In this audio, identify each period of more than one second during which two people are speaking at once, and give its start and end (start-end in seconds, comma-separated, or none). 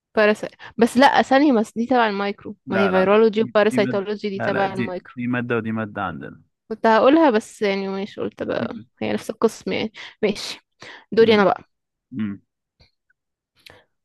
2.6-5.1